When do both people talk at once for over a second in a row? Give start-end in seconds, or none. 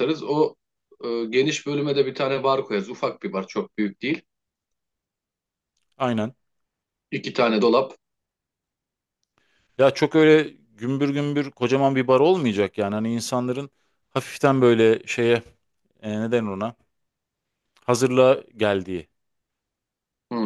none